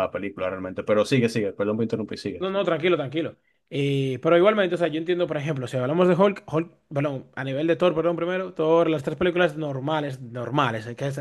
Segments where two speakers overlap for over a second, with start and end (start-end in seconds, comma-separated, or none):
none